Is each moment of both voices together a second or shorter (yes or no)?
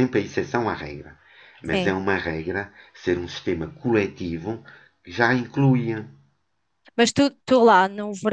yes